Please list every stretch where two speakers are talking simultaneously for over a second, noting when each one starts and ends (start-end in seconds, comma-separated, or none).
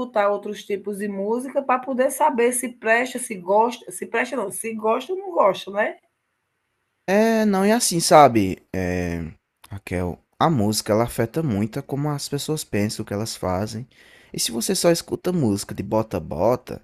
none